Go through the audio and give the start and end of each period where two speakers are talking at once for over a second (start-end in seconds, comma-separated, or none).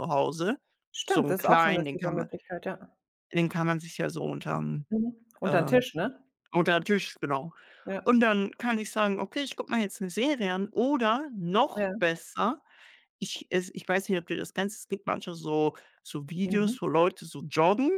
1.1-2.3